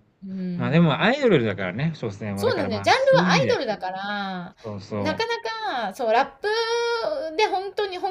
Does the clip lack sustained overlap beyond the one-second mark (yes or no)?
no